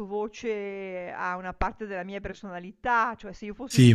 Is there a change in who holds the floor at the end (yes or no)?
no